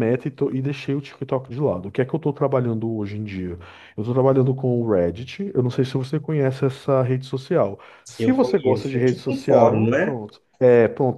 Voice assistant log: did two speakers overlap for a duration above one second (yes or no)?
yes